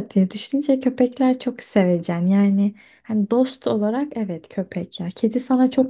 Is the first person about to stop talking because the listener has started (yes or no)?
no